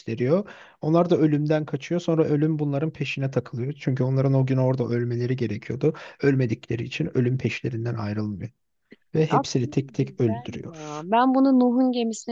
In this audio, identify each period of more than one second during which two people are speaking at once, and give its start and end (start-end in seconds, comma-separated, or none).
9.3-11.1